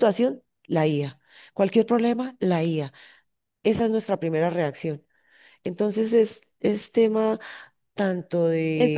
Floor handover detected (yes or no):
yes